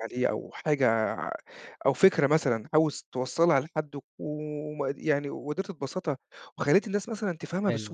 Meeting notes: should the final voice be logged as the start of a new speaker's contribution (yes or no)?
yes